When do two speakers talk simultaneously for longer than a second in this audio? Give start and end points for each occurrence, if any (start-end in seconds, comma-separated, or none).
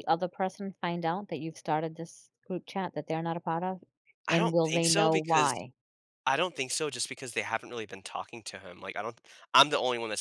4.3-5.5